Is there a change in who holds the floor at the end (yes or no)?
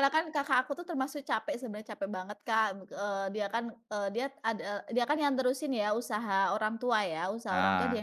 no